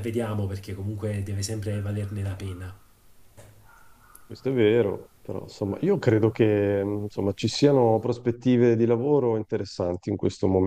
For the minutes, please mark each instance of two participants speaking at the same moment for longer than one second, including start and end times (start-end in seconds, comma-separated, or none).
none